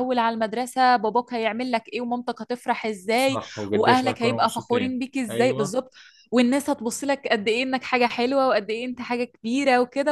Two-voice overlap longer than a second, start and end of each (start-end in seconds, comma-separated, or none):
3.1-5.8